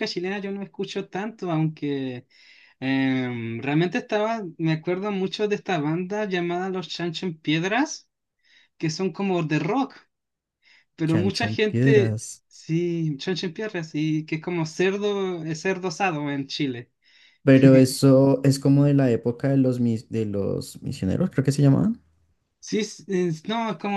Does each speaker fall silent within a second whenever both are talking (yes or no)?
no